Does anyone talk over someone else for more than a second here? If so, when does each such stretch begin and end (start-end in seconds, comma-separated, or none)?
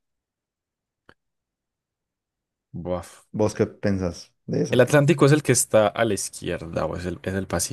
none